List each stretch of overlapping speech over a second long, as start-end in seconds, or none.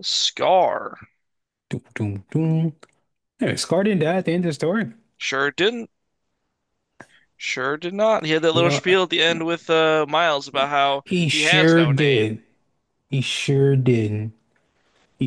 10.5-12.4